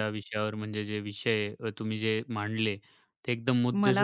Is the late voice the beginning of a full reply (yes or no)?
no